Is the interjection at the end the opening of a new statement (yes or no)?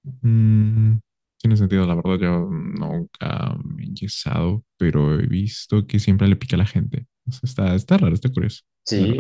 yes